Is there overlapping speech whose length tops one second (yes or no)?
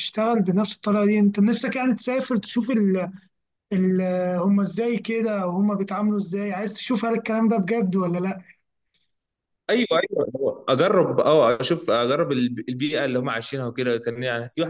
no